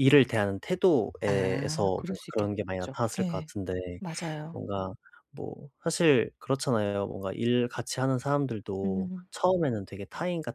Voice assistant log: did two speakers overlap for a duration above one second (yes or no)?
yes